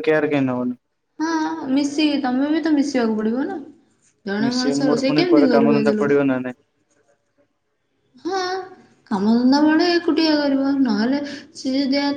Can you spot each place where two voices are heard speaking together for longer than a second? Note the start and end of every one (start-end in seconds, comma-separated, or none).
4.5-6.2